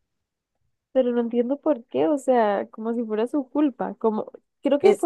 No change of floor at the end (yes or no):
yes